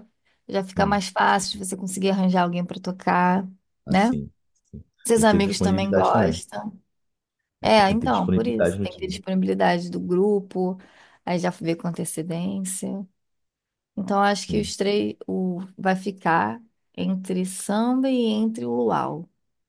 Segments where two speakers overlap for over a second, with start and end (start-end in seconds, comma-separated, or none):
5.0-6.4, 7.8-9.2